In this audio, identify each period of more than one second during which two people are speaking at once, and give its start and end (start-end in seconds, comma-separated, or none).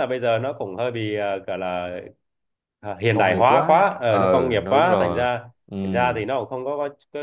3.1-5.3